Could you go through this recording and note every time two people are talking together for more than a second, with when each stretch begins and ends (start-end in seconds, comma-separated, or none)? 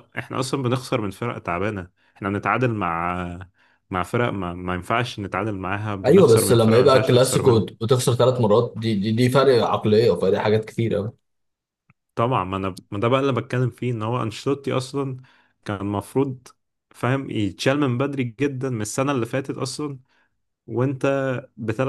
6.0-7.8